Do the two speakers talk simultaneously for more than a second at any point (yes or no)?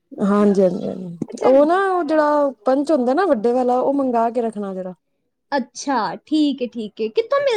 no